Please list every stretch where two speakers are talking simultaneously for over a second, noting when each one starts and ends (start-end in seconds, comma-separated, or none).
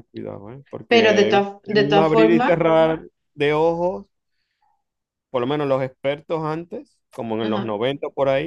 0.9-2.5